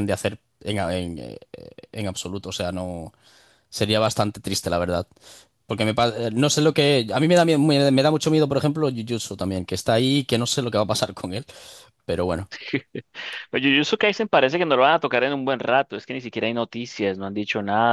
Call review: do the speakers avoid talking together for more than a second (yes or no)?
yes